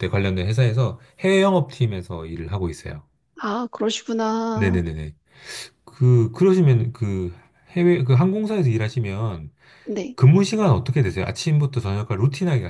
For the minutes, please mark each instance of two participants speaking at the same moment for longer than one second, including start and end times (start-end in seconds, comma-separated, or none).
none